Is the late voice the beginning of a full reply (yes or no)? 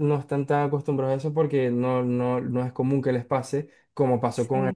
no